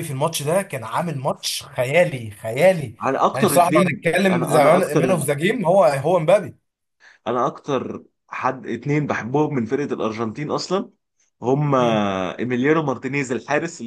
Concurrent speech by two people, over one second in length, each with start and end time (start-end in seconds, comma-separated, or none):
3.3-5.0